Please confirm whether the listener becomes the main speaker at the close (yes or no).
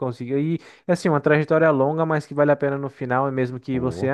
no